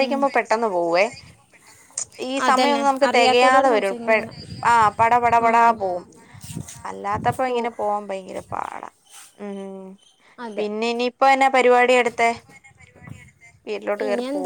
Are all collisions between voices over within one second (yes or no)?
no